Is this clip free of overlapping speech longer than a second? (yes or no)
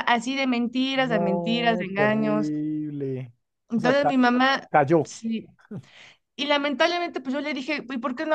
no